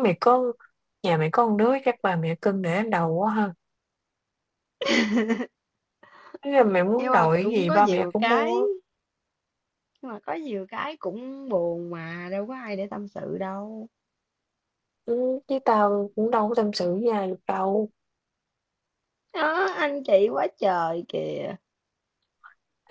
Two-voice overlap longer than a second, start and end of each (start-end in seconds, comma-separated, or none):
7.0-8.6